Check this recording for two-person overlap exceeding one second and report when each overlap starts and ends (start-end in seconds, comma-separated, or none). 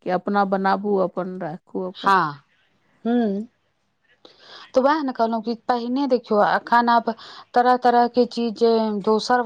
none